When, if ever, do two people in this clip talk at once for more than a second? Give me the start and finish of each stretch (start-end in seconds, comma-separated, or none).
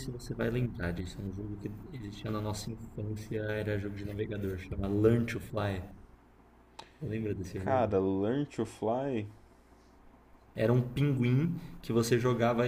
none